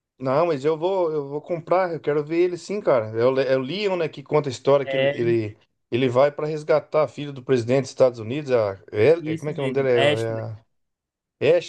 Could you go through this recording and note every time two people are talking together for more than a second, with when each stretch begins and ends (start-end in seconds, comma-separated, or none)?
9.2-10.5